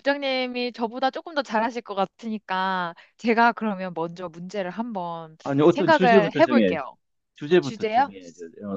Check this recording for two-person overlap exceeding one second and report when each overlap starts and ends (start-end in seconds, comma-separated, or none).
5.4-6.8